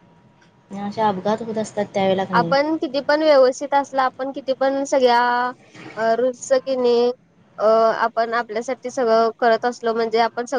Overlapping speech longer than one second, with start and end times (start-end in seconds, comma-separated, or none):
none